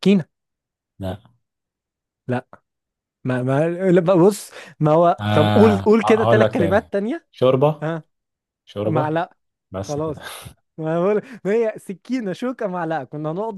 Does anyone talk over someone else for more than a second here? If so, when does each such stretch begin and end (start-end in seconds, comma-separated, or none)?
5.2-6.9